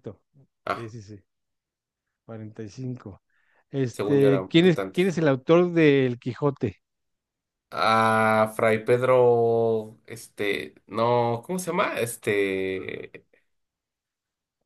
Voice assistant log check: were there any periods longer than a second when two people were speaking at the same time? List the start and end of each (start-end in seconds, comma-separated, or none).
3.9-5.1